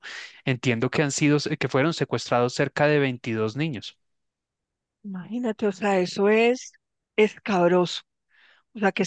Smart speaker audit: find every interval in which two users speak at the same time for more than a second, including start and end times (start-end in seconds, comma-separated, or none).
none